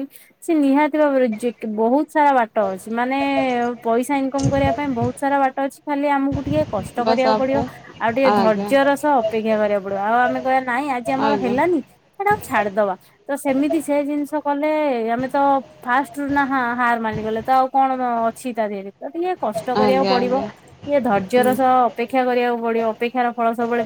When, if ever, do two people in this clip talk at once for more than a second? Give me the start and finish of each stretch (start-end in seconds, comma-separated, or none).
none